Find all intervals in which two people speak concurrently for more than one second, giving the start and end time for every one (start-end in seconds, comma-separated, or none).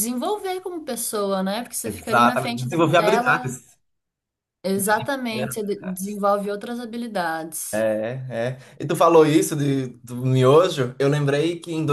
1.8-3.5